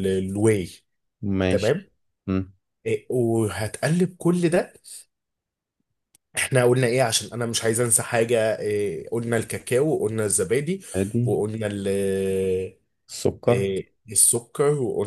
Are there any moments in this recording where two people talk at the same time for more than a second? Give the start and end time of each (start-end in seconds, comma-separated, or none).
none